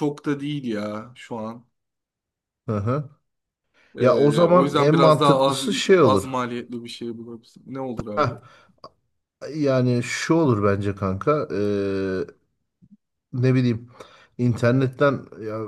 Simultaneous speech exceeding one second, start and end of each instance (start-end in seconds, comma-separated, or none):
4.0-6.3